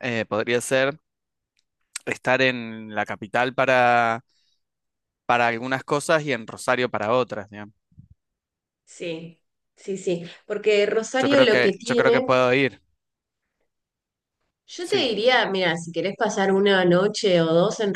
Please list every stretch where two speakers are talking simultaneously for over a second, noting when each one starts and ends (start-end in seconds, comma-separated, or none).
11.2-12.4